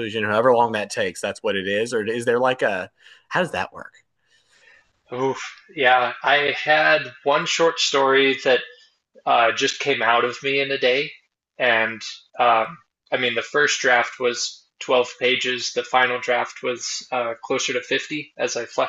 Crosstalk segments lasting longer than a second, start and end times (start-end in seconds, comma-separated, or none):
none